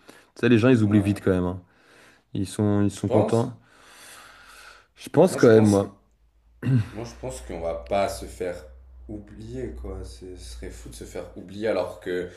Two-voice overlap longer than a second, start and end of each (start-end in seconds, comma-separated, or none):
none